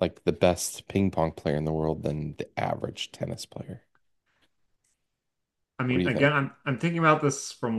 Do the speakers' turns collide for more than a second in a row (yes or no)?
no